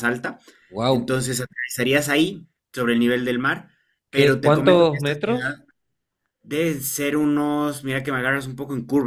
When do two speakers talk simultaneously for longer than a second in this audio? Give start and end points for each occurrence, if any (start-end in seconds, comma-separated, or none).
4.1-5.6